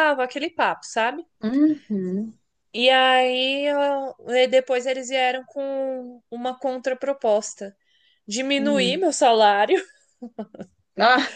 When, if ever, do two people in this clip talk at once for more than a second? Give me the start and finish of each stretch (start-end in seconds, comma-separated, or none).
none